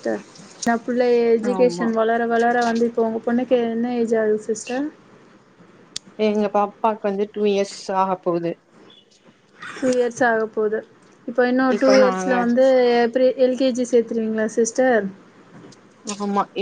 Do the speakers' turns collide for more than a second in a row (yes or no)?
no